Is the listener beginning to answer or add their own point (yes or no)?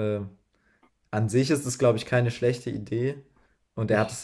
no